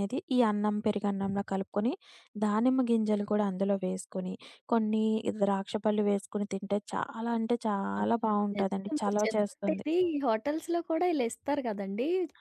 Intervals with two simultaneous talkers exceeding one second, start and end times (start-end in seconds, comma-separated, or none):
8.0-9.9